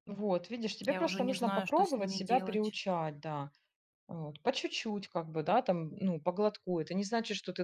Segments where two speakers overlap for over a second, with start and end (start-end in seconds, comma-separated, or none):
0.9-2.8